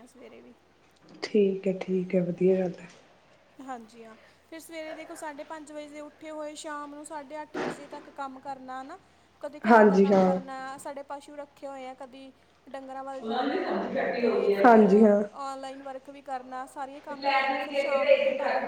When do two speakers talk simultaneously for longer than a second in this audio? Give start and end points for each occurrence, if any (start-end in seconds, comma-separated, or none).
none